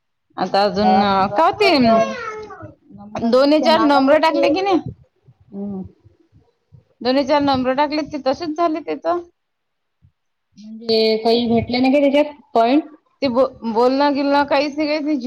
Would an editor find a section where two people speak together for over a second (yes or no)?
yes